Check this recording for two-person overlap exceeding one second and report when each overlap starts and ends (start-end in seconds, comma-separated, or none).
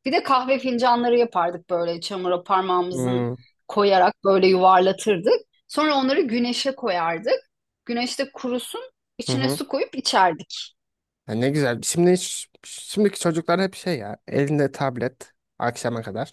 none